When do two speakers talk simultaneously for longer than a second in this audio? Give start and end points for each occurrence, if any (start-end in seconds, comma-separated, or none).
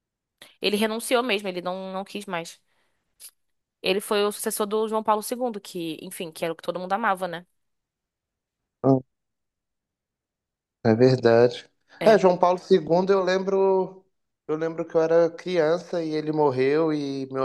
none